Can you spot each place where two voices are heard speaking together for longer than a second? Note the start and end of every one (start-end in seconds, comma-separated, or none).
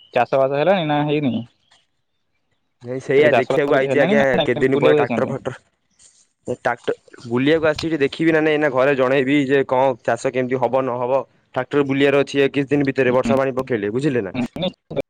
3.1-5.3